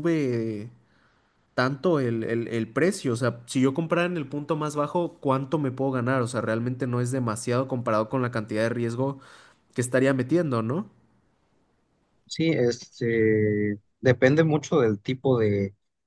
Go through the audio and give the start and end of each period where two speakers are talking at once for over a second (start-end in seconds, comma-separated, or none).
none